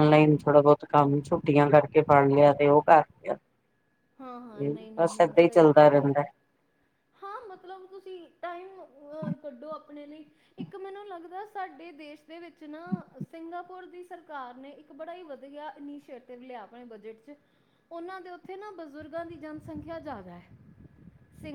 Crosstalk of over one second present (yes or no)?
yes